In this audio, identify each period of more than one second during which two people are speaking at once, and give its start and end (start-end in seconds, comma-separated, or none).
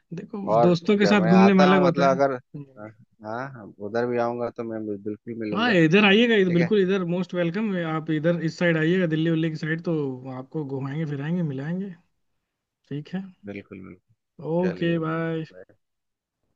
0.6-2.3